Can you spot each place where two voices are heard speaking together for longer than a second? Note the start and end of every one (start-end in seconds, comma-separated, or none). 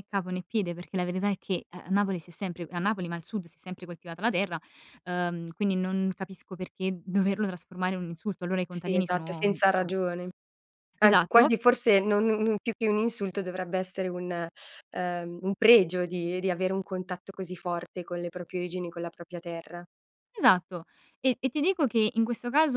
8.7-9.9